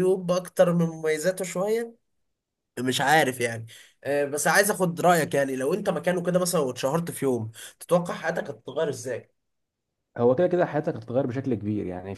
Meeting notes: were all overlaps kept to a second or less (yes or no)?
yes